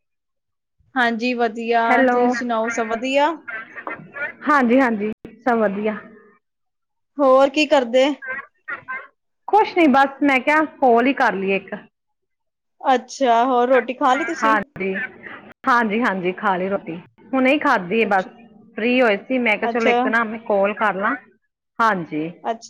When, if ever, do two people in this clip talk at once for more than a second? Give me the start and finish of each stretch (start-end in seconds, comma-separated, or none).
none